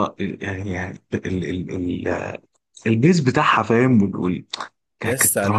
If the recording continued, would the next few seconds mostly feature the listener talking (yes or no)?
yes